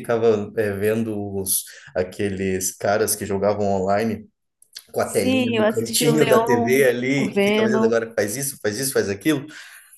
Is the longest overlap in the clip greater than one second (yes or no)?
yes